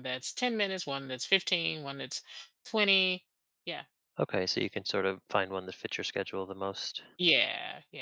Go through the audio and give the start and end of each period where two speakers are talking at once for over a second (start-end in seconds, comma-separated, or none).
none